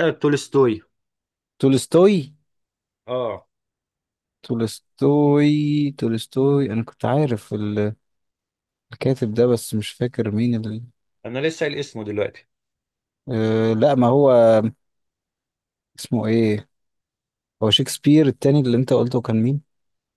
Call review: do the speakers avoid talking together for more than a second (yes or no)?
yes